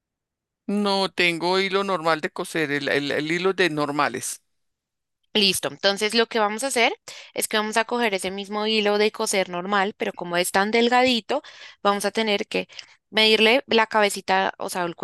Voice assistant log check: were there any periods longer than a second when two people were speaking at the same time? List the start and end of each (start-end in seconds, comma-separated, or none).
none